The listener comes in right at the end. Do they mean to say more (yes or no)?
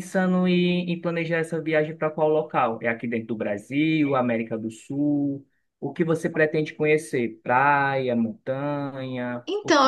yes